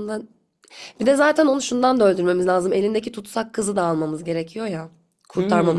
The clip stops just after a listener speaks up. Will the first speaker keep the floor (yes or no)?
no